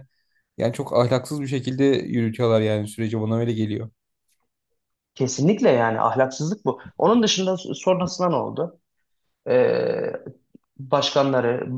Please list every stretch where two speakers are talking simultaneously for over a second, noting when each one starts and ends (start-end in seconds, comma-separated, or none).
none